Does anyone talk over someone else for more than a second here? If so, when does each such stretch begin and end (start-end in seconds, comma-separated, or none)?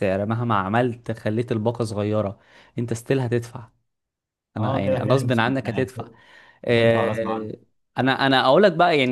4.6-5.9